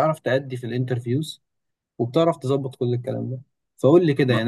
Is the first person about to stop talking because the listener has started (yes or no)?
no